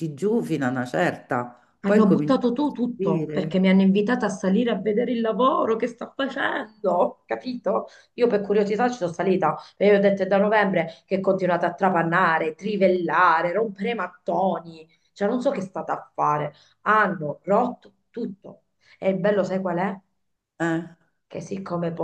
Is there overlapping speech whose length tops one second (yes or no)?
yes